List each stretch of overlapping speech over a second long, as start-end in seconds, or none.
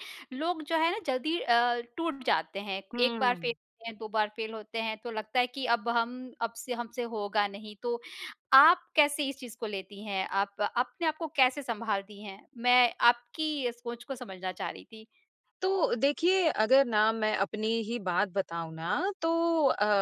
none